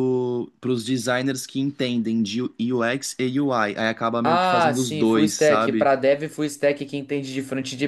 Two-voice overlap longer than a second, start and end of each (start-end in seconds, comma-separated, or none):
4.2-5.9